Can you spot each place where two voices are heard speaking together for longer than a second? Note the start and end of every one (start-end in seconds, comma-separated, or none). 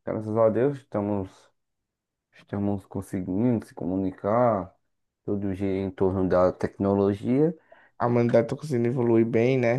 none